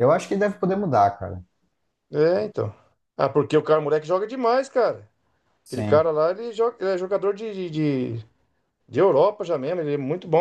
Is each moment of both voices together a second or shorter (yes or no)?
yes